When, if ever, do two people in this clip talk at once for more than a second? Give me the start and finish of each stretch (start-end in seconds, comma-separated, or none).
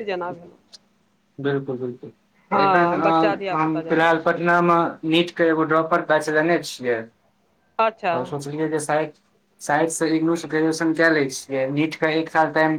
2.5-4.1